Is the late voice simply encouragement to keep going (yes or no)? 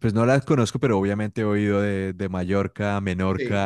no